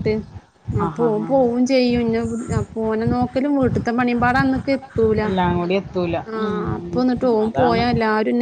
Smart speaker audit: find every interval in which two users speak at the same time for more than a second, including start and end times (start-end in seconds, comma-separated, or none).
none